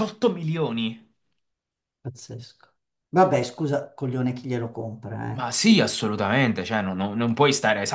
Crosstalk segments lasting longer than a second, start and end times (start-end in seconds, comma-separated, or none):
none